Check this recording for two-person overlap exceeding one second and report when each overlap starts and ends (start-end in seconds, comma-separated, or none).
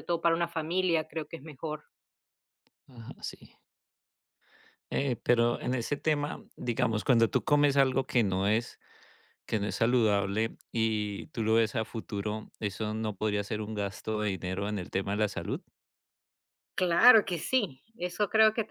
none